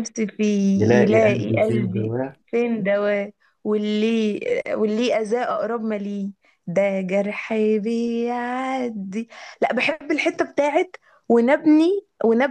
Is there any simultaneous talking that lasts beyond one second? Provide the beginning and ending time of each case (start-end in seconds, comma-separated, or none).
0.8-2.1